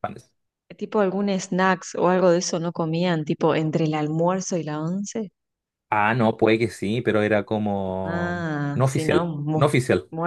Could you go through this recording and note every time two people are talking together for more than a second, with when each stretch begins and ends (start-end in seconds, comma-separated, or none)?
8.0-9.7